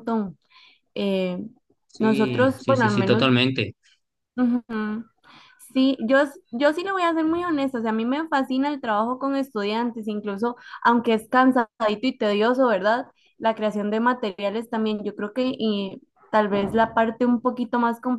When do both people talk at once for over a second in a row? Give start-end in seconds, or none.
2.0-3.3